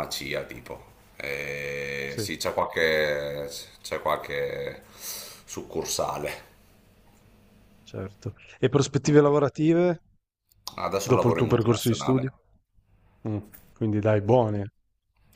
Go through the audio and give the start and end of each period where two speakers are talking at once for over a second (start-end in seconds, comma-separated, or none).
11.0-12.3